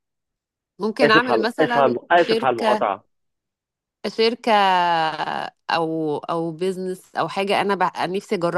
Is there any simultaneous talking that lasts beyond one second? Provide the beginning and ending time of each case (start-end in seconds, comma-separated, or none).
1.0-2.8